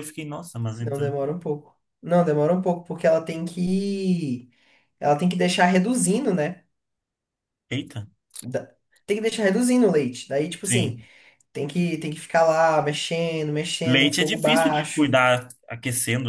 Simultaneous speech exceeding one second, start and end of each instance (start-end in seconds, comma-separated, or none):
13.8-15.2